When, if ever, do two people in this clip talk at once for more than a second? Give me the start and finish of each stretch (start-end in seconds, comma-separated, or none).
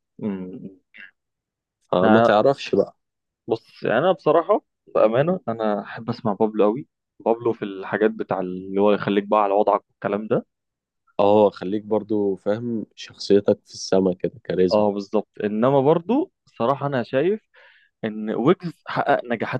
none